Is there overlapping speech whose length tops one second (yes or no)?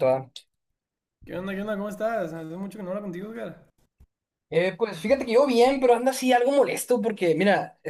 no